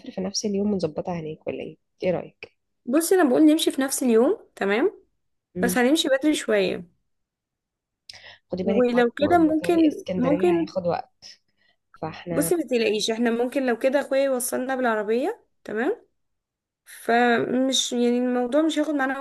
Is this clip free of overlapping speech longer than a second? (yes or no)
no